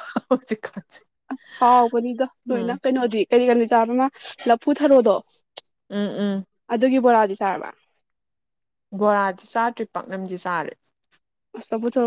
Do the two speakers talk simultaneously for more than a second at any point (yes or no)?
no